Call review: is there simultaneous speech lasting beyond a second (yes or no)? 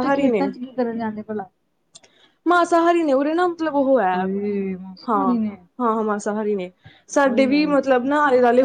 no